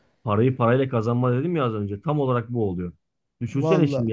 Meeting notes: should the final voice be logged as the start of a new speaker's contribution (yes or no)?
no